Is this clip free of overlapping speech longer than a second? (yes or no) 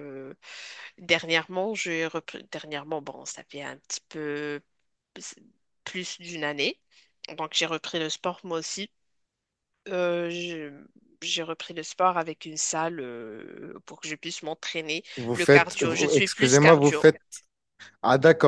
no